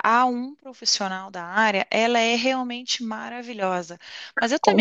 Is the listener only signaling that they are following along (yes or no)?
yes